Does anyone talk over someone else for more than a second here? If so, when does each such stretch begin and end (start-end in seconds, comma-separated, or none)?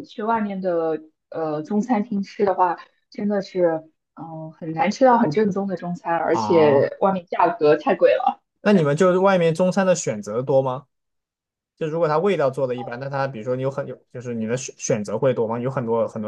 none